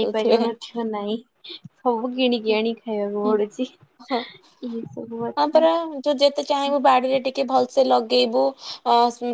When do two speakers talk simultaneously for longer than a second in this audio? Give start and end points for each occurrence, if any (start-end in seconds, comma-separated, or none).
none